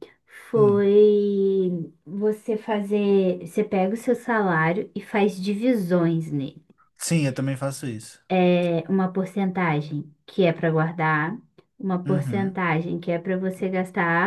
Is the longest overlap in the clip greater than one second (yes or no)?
no